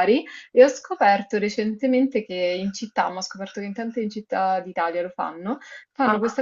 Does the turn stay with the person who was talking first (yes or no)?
yes